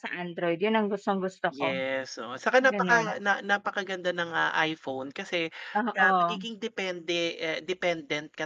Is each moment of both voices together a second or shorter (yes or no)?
yes